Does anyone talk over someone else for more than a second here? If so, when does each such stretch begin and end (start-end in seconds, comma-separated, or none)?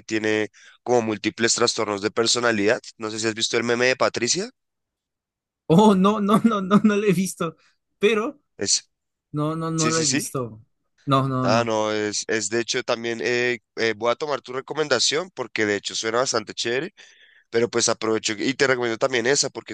none